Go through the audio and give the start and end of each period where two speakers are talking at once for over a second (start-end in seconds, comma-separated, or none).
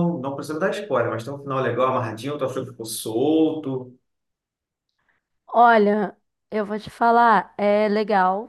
none